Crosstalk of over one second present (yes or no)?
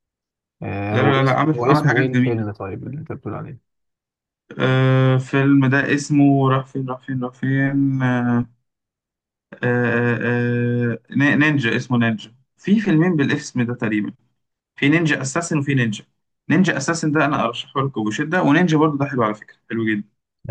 yes